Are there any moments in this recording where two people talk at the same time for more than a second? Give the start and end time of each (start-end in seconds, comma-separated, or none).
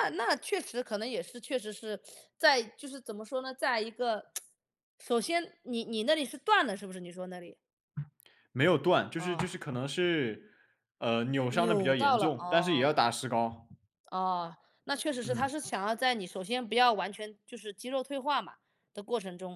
11.5-12.9